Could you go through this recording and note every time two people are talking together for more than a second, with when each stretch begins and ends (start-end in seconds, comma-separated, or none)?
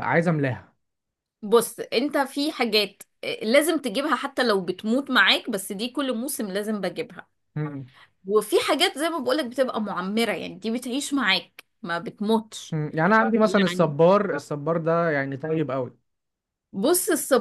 none